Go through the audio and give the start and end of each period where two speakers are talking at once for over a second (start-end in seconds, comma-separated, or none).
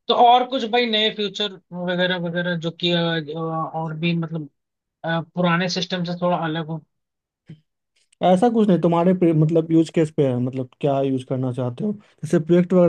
none